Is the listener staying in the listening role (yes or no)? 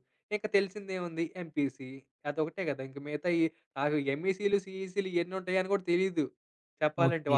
no